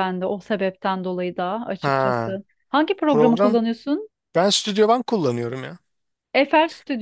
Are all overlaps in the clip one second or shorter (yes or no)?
yes